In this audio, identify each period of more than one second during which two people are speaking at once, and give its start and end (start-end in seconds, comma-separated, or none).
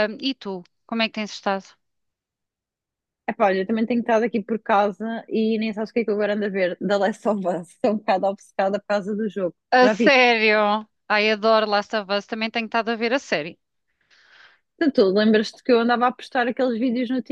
none